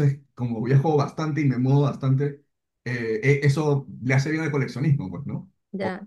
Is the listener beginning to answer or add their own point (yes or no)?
yes